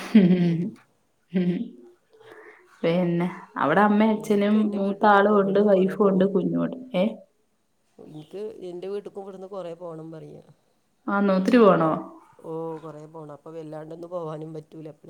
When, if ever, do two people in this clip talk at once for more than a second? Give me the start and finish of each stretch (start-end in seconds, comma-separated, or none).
4.2-5.9